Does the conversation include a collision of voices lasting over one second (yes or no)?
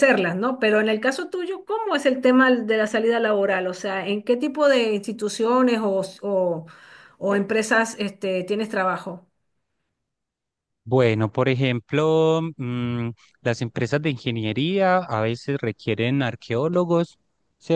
no